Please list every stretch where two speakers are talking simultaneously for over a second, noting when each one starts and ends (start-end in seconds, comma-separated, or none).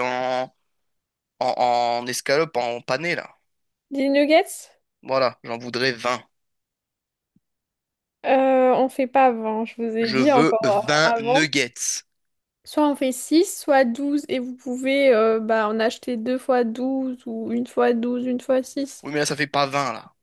10.0-11.5